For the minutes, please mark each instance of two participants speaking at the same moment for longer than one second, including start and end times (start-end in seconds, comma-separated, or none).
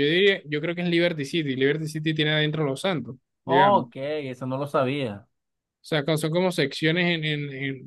none